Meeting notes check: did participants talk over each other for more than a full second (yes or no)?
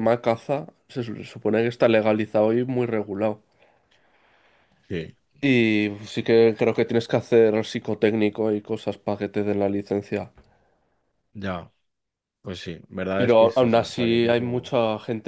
yes